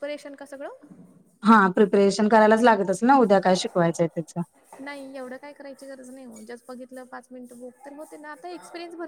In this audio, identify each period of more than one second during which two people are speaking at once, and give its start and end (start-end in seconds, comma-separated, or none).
none